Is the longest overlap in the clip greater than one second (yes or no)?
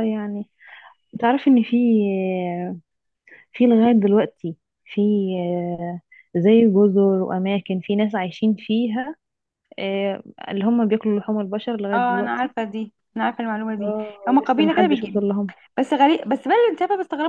yes